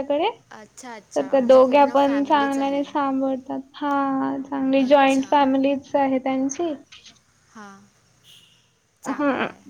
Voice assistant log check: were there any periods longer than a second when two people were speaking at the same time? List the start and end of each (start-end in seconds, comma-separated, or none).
1.1-2.9